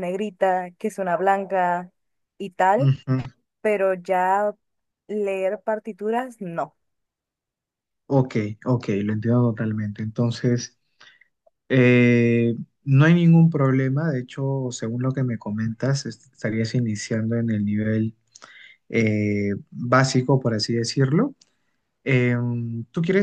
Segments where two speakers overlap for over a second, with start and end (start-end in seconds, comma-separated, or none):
none